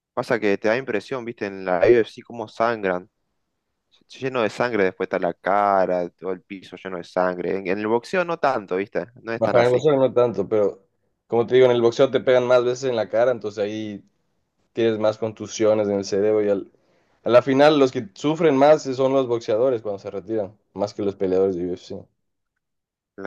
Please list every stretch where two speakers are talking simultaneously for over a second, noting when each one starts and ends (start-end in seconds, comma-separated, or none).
none